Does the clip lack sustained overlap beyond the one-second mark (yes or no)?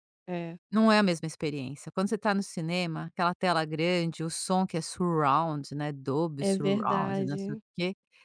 no